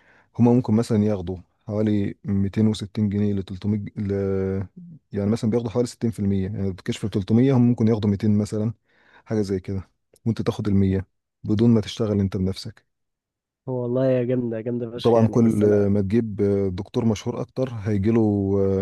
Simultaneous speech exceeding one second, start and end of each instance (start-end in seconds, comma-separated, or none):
none